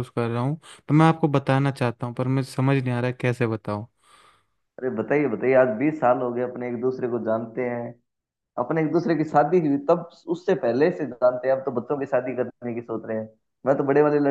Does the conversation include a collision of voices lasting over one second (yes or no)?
no